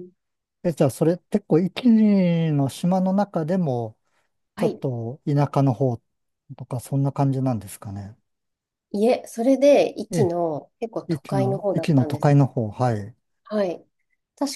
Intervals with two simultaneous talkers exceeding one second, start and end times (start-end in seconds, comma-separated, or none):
11.1-12.3